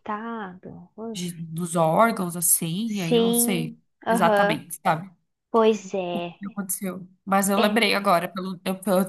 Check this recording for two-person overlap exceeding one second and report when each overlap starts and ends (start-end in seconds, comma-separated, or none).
2.9-4.6